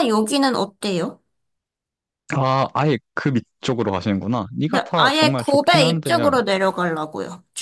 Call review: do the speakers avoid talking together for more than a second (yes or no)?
no